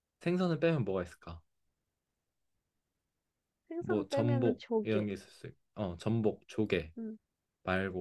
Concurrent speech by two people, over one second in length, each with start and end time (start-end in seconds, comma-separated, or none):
3.8-5.1